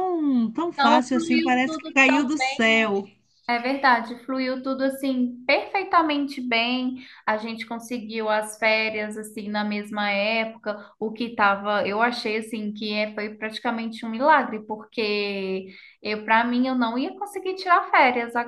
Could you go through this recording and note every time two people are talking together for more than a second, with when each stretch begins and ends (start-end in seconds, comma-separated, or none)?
0.7-2.3